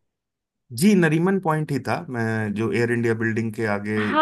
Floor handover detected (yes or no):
yes